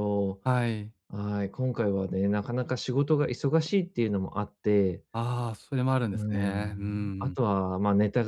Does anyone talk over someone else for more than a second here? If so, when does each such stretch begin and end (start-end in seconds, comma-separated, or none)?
6.1-7.4